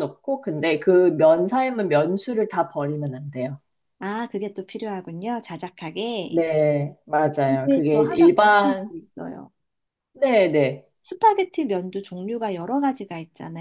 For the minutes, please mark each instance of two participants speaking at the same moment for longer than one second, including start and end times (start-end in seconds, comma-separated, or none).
7.5-8.9